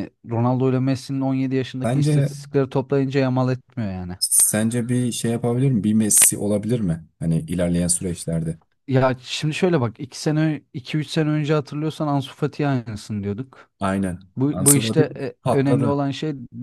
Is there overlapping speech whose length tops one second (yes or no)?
yes